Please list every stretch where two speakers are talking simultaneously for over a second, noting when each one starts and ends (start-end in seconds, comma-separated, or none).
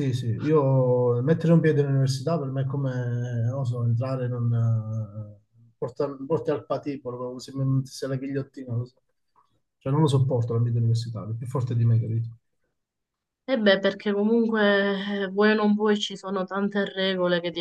none